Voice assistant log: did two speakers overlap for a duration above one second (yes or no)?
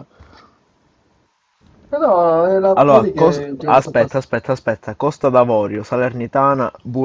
yes